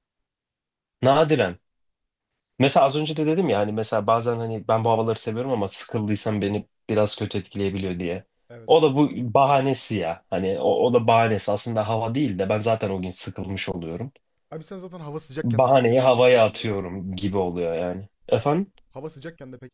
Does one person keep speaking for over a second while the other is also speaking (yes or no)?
yes